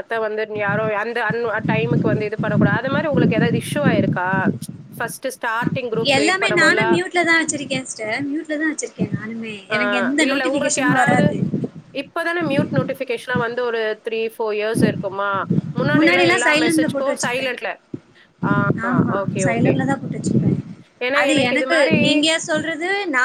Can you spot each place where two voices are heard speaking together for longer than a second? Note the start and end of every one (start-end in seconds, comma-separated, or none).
16.0-17.5